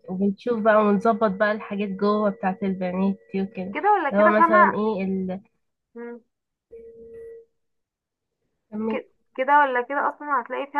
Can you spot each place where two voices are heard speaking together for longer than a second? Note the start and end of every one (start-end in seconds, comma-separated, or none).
none